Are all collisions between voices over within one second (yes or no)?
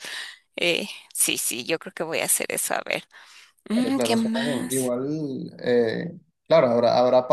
no